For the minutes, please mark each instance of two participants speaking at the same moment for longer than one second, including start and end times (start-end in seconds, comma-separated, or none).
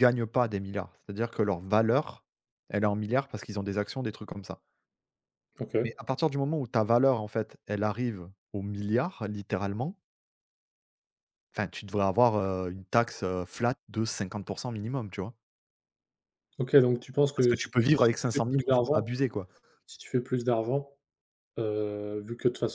17.4-19.1